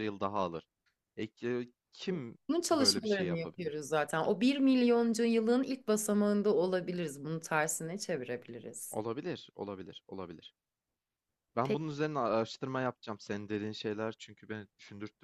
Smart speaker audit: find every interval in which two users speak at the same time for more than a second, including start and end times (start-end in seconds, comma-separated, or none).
2.5-3.8